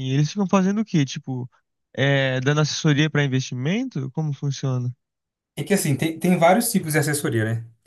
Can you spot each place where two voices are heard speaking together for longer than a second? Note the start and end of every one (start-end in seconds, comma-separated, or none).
none